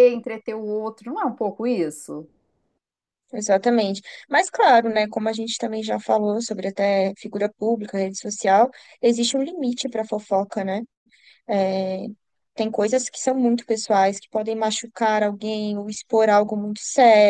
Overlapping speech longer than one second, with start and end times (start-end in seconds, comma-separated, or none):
none